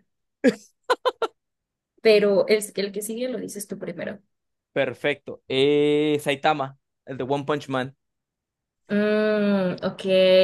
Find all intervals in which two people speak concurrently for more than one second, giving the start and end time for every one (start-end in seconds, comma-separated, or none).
none